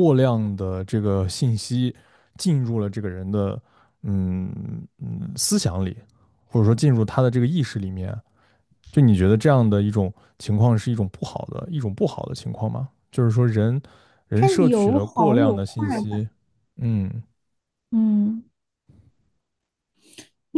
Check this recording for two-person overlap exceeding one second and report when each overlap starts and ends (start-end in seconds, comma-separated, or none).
14.3-16.3